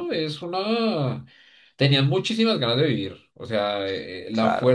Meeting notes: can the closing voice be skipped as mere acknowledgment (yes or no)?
yes